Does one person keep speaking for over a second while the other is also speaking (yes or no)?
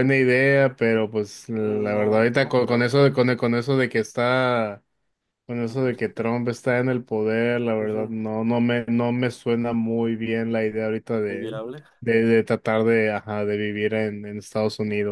yes